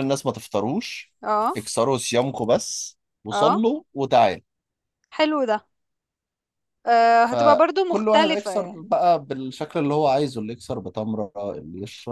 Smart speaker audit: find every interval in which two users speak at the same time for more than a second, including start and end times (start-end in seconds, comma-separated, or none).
7.3-8.9